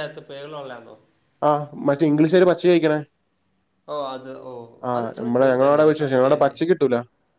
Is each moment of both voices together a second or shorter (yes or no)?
no